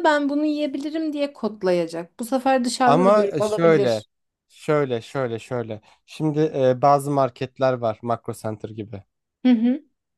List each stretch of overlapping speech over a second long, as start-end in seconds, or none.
2.8-4.0